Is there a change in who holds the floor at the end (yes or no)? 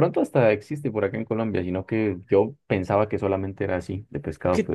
yes